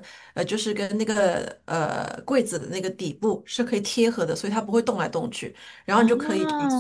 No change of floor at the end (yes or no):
yes